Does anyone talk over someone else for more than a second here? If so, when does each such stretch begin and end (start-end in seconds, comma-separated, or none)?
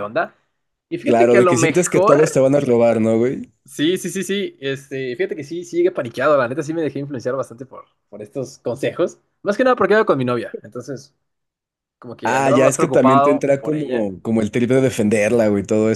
1.0-2.4, 12.2-14.1